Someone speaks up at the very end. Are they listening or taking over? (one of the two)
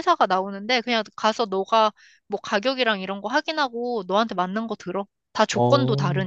taking over